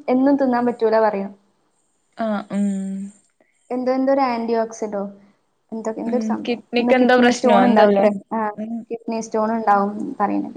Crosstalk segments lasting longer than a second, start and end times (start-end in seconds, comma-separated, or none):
6.1-8.1